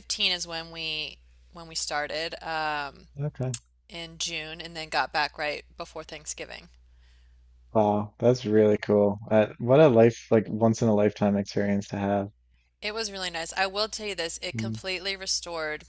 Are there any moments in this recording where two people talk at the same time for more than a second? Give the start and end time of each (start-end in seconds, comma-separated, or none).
none